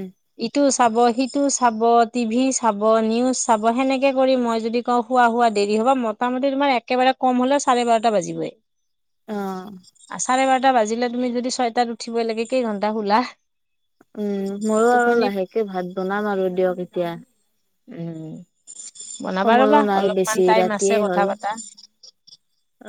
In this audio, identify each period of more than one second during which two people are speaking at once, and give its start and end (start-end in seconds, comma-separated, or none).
19.4-21.2